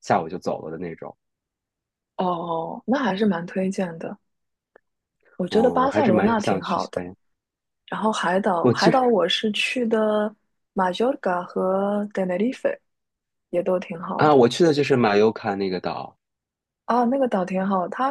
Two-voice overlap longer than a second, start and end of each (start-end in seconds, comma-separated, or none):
5.5-7.0